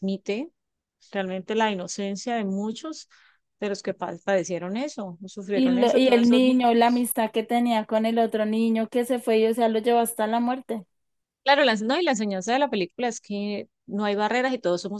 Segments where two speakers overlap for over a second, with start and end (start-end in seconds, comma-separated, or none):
5.5-7.1